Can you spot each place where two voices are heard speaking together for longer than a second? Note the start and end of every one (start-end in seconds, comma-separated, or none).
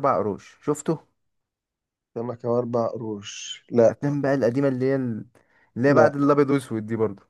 none